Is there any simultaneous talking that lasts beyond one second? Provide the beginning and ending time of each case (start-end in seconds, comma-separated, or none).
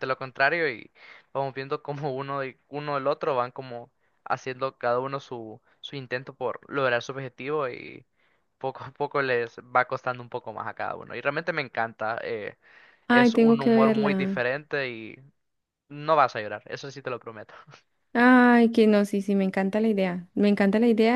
13.1-14.5